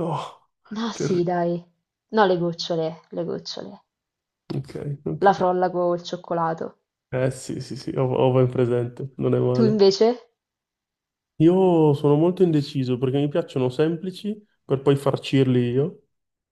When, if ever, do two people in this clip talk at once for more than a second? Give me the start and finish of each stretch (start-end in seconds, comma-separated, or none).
none